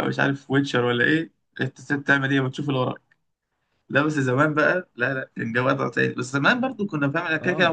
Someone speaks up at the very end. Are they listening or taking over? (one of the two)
listening